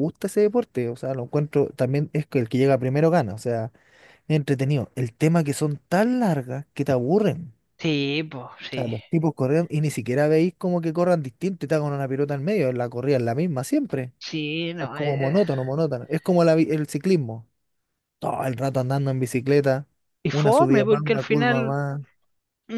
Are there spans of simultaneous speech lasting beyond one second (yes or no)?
yes